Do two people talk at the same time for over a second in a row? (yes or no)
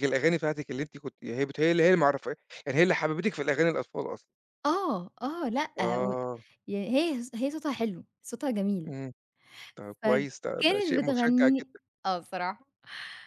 yes